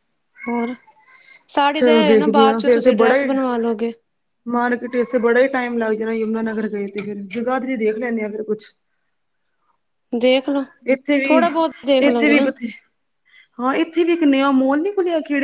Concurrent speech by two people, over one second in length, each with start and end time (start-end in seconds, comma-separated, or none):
1.8-3.3